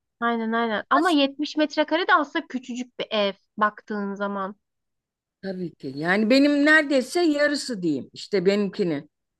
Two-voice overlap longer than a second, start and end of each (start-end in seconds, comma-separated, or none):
none